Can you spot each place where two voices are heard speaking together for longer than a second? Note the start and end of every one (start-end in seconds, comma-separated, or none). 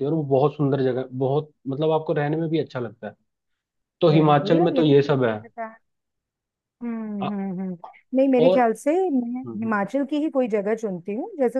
4.1-5.4